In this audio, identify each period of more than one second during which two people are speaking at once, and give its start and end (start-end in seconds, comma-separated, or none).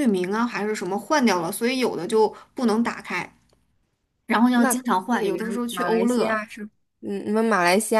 4.5-6.4